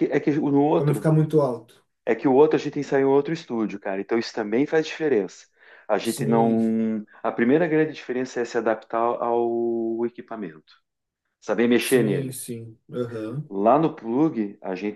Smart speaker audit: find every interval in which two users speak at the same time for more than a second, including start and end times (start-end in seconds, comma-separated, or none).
none